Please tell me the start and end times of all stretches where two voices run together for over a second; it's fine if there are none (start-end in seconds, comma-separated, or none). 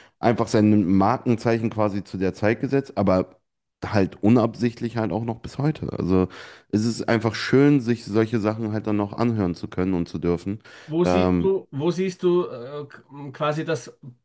none